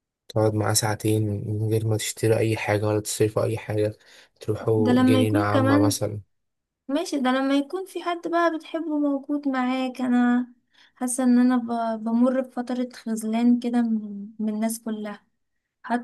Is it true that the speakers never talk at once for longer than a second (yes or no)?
no